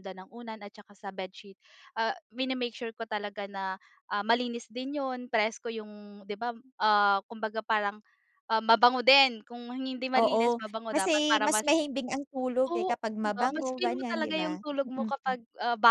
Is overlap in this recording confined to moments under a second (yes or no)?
no